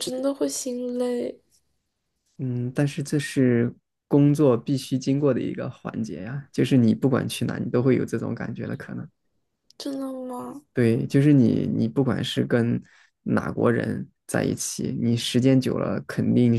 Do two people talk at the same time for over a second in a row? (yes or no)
no